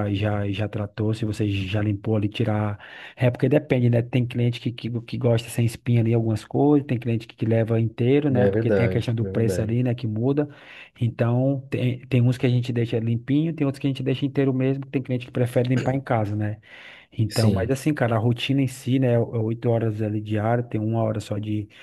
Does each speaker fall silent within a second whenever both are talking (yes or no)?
no